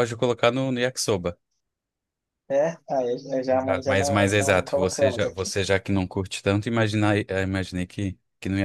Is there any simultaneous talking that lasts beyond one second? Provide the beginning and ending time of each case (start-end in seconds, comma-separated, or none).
3.5-5.5